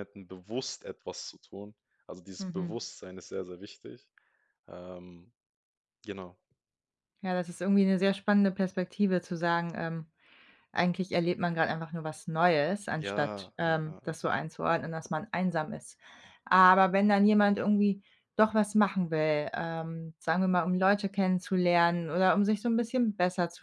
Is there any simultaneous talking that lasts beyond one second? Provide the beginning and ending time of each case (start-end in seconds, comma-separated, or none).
13.0-14.4